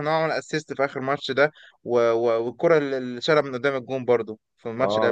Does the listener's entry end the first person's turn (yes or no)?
yes